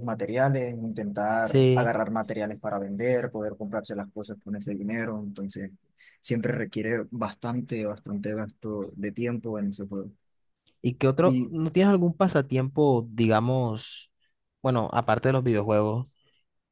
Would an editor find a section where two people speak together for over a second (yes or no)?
no